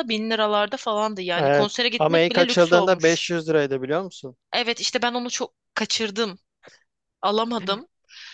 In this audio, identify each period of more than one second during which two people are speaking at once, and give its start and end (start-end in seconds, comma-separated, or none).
1.4-3.2